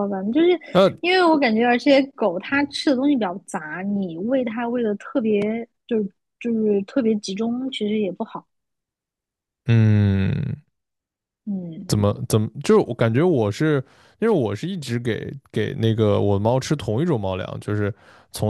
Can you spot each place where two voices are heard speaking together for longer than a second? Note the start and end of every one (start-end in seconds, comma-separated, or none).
none